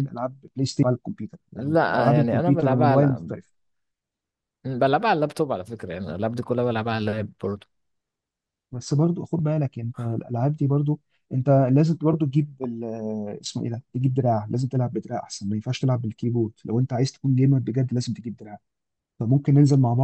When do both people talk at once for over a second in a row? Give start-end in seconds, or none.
1.6-3.0